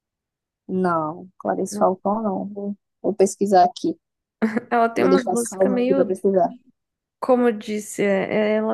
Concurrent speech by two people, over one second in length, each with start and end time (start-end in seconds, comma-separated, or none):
5.0-6.2